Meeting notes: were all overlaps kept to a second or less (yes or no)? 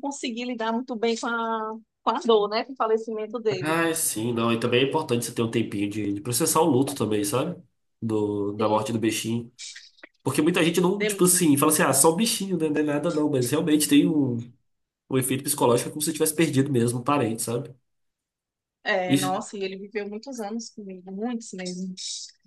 yes